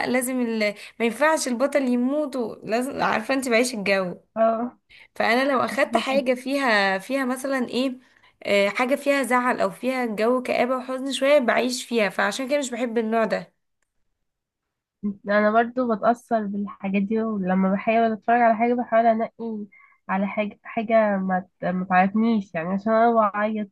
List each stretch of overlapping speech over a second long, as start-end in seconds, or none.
none